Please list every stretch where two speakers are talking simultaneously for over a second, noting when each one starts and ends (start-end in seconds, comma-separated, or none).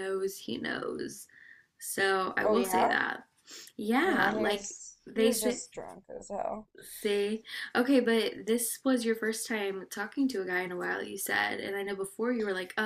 4.0-5.6